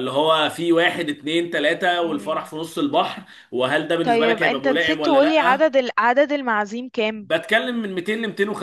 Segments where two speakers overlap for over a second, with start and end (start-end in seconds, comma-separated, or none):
4.0-5.7